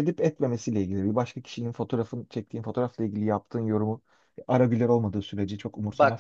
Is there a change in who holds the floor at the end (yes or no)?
yes